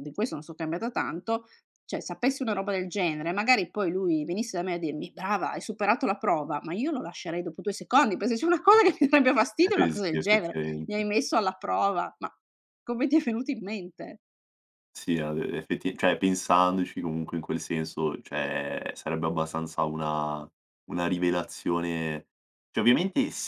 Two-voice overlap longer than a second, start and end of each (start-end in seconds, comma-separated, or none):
9.6-11.1